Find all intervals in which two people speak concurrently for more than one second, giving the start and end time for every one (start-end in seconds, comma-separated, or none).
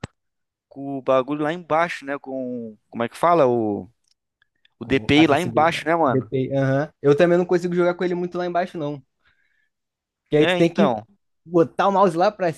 4.8-6.3